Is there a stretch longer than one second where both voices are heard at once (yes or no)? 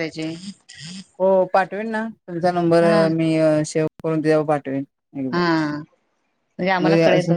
no